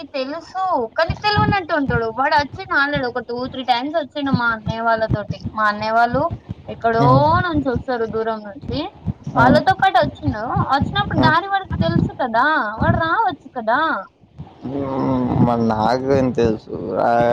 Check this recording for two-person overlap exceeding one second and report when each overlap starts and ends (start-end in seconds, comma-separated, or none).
none